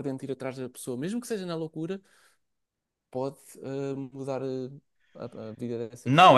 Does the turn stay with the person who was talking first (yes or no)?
no